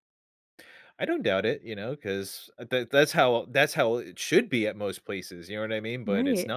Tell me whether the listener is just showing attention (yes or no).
no